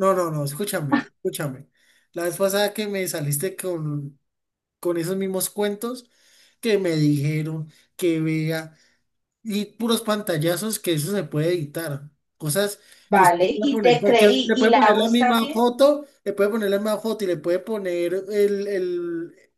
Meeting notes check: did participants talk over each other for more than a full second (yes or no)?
yes